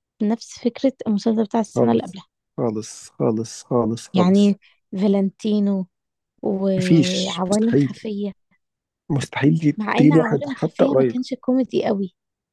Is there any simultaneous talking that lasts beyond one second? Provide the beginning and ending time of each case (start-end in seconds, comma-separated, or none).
6.8-8.1, 9.8-11.2